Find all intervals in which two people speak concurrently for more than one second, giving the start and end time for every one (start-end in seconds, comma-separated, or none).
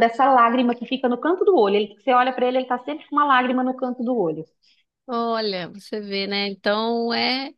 none